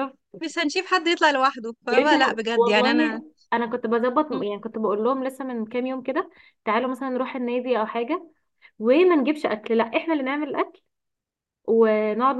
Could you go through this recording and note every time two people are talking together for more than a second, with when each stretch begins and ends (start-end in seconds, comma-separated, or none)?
1.9-3.2